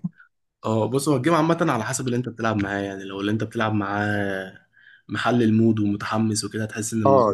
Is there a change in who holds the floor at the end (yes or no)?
yes